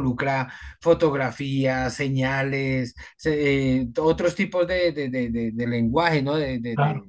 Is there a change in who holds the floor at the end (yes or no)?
yes